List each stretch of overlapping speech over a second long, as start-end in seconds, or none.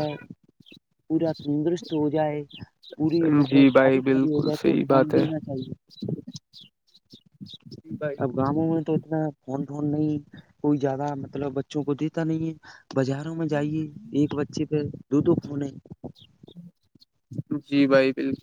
3.5-5.2